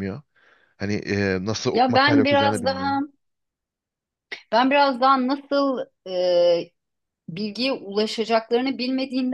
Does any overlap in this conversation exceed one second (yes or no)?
yes